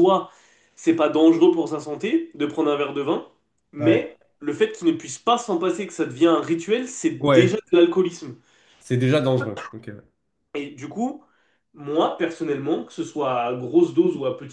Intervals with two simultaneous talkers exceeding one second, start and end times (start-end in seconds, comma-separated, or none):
none